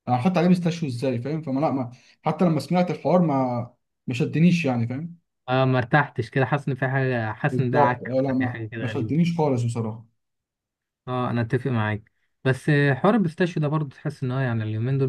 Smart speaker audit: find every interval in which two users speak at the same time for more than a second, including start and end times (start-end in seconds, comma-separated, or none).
7.5-9.2